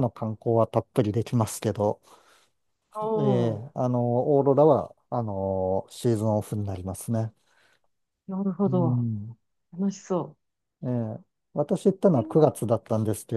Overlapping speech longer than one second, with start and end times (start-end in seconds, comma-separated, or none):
none